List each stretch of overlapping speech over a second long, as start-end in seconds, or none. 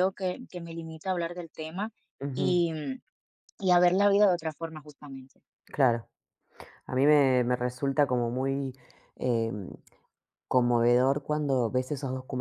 none